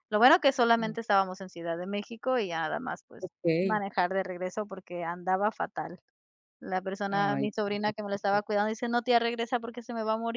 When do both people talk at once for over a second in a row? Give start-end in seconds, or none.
7.1-8.4